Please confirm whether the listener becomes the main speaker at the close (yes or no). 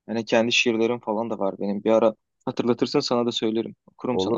yes